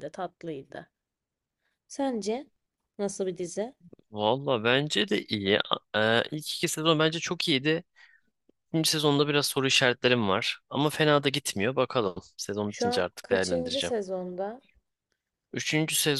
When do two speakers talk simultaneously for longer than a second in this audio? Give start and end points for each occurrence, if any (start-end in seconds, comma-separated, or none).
12.7-13.9